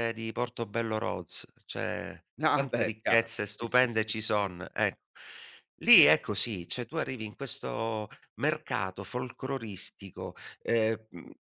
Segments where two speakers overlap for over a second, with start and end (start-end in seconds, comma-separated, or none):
2.4-4.5